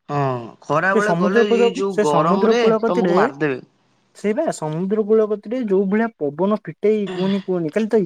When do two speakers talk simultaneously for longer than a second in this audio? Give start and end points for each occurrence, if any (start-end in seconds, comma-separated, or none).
0.9-3.1